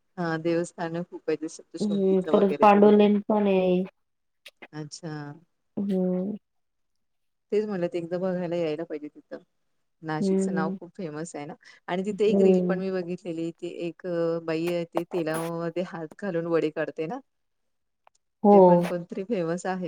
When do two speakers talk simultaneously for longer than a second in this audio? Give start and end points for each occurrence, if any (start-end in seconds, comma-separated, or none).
1.8-3.2